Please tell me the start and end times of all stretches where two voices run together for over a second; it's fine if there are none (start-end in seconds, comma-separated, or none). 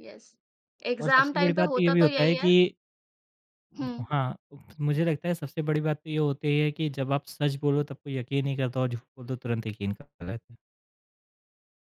1.0-2.5